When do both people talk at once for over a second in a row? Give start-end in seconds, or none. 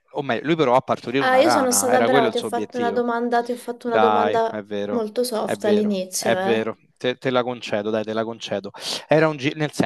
1.2-3.1, 3.8-6.7